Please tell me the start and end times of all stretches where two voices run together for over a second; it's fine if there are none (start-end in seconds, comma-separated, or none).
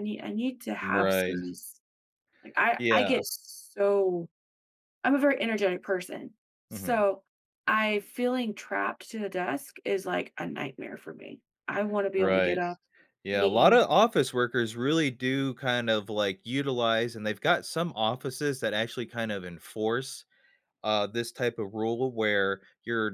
none